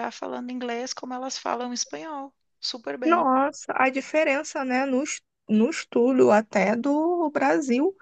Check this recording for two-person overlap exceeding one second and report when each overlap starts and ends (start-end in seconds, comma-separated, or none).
none